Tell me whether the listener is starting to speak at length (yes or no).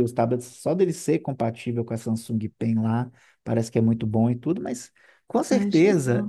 no